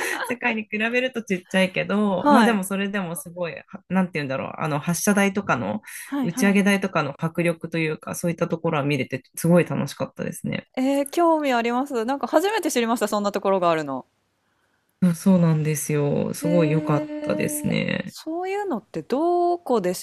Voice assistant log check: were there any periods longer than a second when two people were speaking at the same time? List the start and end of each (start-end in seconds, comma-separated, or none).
16.4-18.1